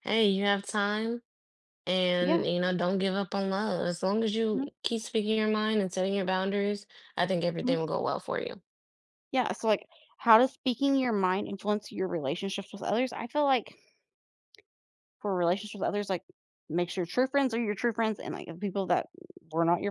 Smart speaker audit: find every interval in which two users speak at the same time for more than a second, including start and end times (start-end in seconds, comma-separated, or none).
none